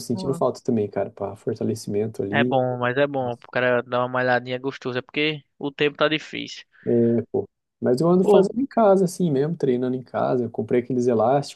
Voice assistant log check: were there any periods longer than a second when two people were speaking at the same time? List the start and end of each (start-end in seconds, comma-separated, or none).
none